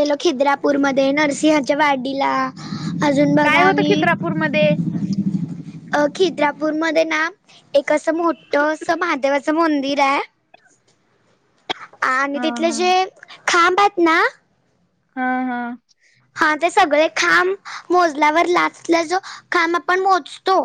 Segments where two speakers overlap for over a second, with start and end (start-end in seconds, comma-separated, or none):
none